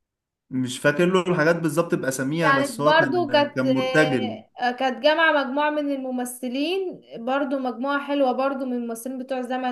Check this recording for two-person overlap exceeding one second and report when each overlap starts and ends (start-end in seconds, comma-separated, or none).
2.4-3.6